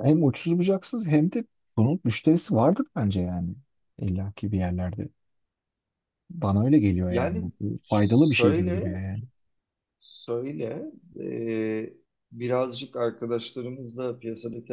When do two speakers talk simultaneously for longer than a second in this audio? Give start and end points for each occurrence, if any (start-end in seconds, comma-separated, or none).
7.1-9.0